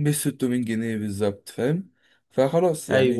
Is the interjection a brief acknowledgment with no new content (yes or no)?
no